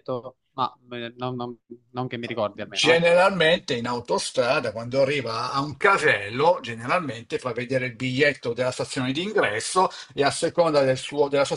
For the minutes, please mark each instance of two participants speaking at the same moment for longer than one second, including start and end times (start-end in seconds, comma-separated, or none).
none